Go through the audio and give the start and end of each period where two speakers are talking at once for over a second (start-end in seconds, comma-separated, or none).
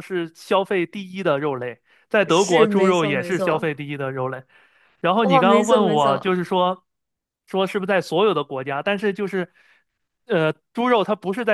2.3-3.7, 5.2-6.4